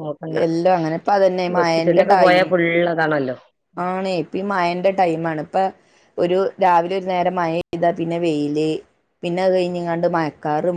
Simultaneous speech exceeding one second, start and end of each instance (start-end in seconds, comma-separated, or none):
none